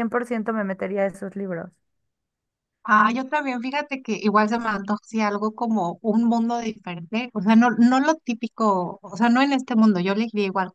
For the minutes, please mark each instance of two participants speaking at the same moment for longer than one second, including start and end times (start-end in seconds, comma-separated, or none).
none